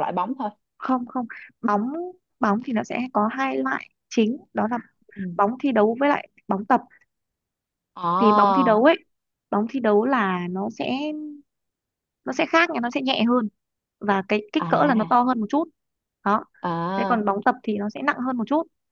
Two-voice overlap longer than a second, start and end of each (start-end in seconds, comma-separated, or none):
none